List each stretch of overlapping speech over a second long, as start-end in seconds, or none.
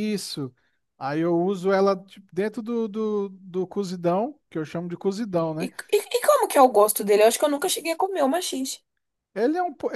none